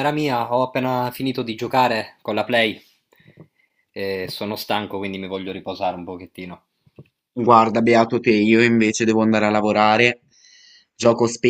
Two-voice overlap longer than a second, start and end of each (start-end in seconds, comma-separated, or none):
none